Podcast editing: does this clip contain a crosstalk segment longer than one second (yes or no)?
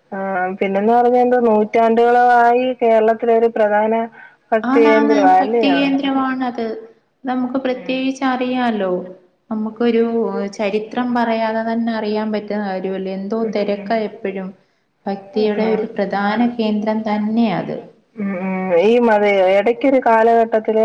no